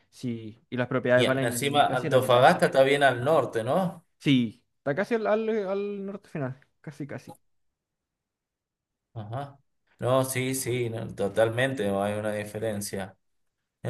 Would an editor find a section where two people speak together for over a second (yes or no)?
yes